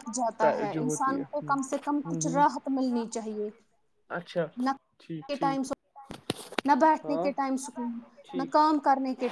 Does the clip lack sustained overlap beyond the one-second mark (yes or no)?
no